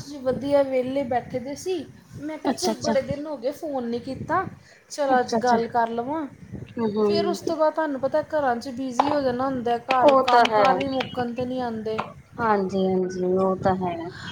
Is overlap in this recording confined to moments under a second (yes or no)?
yes